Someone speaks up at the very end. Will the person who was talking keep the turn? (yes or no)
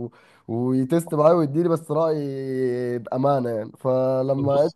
yes